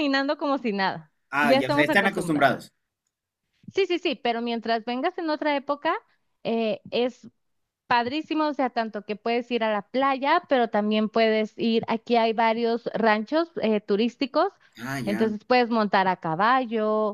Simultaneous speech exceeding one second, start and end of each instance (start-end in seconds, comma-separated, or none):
1.3-2.5